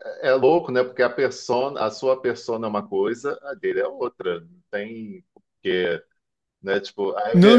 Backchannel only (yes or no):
no